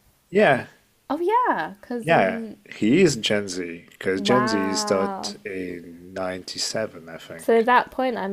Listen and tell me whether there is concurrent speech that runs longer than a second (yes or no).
yes